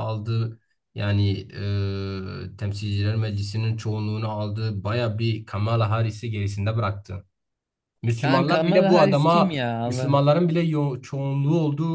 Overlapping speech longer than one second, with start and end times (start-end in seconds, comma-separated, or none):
8.2-10.2